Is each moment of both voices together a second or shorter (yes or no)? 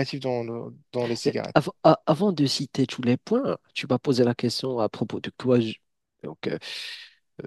yes